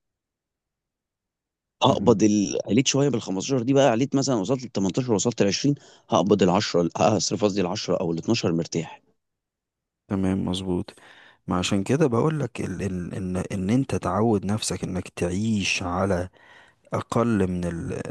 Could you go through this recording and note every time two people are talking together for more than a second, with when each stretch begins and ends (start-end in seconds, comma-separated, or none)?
none